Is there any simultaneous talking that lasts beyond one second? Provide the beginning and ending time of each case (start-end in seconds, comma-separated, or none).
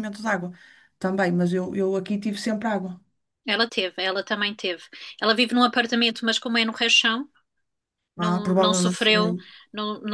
8.2-9.4